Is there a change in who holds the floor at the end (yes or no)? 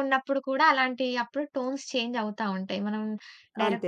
no